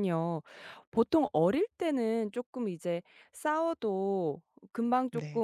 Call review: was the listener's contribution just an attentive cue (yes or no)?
yes